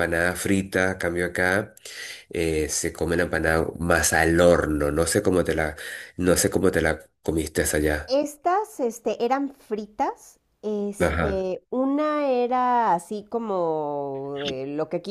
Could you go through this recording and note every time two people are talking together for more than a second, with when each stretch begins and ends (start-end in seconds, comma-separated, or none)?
none